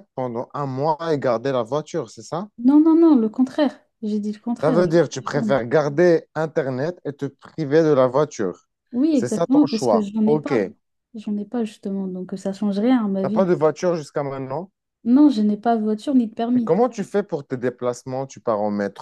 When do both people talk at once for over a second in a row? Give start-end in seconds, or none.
9.1-10.6